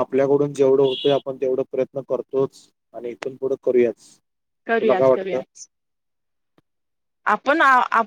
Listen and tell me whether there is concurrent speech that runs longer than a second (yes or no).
no